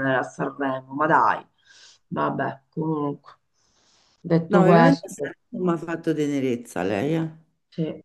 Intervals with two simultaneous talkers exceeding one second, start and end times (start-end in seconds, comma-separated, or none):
none